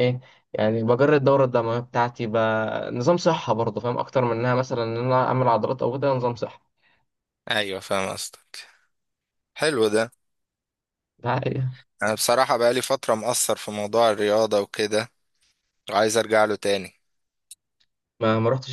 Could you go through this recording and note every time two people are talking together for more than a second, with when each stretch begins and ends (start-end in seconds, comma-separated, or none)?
none